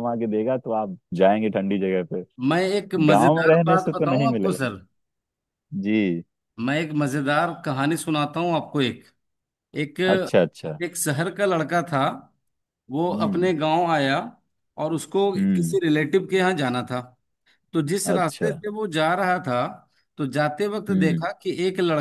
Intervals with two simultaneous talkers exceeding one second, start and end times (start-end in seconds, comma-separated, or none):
3.0-4.7